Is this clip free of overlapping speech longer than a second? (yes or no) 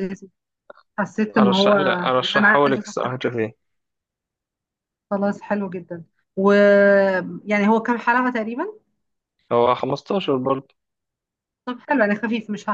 no